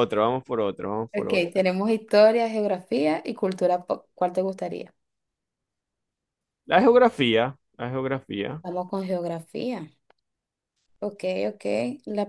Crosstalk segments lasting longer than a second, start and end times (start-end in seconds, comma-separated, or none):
none